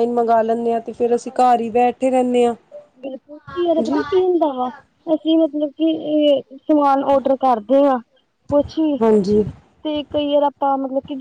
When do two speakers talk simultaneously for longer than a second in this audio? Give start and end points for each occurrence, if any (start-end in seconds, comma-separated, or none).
none